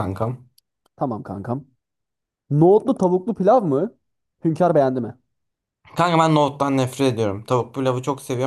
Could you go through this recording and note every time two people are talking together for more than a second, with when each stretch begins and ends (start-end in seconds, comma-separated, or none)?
none